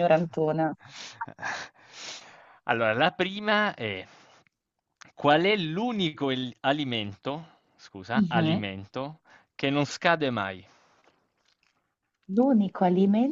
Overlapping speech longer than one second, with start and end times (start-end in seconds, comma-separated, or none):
none